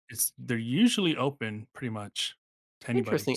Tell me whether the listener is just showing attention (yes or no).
no